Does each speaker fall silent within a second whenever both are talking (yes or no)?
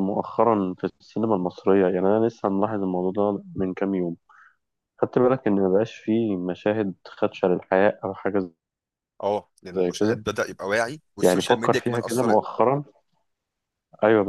no